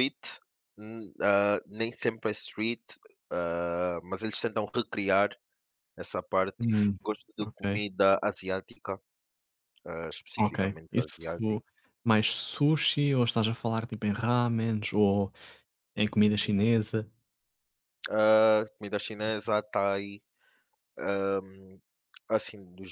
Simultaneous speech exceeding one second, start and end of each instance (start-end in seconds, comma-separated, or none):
10.4-11.6